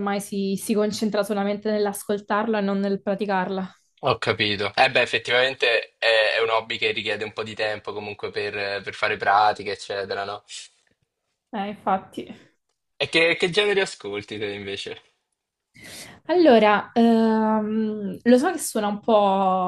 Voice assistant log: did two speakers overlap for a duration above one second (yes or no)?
no